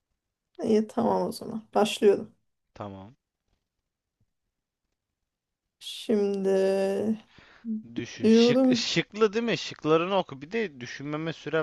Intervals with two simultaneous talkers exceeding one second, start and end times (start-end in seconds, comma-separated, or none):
none